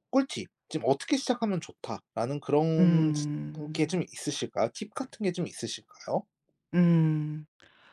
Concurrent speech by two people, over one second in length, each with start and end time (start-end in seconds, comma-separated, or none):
none